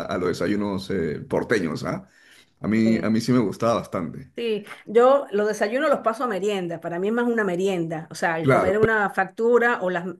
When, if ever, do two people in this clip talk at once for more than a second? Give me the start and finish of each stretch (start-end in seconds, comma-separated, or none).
none